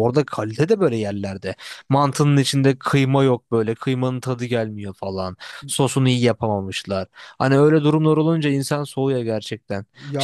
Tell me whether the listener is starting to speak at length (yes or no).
no